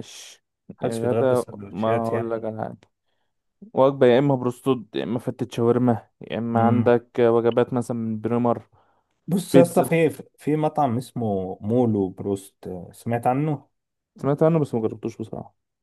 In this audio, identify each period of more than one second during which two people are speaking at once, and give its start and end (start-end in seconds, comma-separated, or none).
0.8-2.5